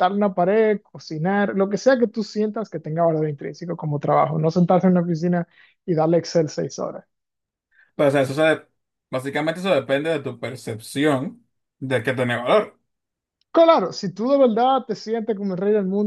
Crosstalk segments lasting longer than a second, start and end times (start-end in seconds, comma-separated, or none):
none